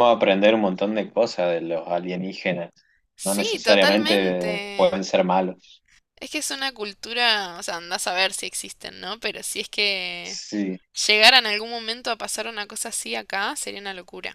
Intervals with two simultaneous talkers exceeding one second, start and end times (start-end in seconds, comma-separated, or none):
3.2-5.0